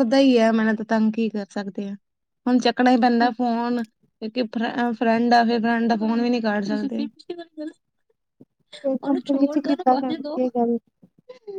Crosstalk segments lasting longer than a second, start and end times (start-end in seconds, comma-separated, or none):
9.0-10.4